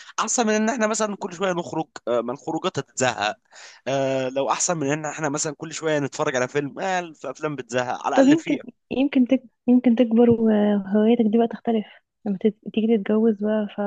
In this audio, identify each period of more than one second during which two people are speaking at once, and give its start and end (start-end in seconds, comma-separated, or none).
none